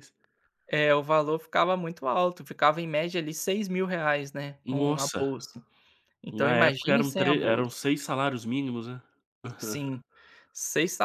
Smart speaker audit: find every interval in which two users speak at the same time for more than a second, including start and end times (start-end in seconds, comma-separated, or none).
6.3-7.8